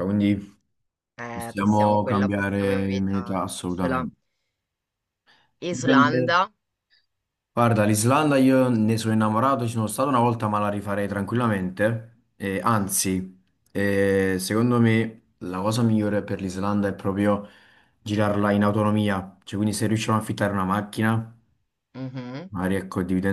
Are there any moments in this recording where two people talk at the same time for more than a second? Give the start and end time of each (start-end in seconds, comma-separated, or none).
1.3-4.1